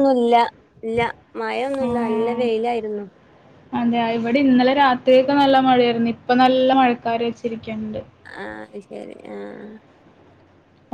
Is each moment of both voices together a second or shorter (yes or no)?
yes